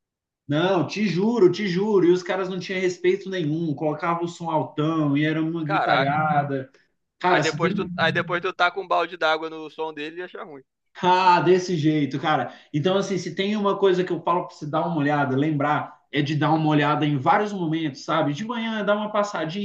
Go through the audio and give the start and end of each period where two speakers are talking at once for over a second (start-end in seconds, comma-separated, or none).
none